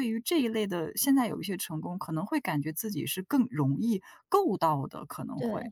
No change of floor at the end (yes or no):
no